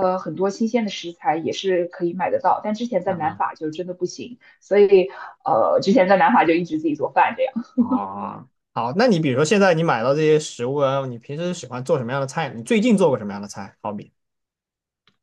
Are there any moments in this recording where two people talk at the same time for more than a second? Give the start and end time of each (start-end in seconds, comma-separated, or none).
none